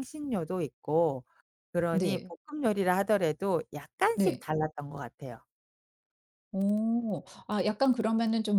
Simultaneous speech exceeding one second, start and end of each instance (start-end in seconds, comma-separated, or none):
none